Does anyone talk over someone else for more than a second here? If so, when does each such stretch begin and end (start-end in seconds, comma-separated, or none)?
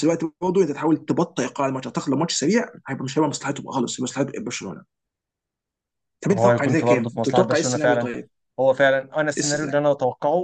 6.3-8.1